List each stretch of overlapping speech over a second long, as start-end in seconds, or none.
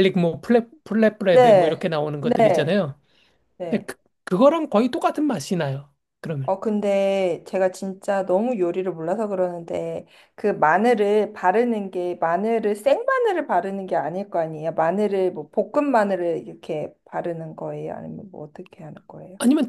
1.3-2.8